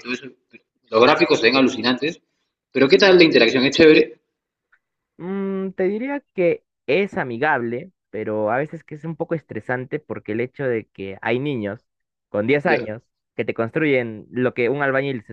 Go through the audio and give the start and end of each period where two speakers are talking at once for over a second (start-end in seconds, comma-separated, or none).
none